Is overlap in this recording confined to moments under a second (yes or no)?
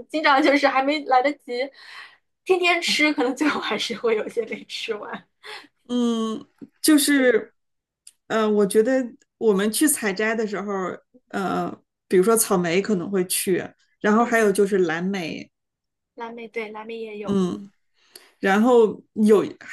yes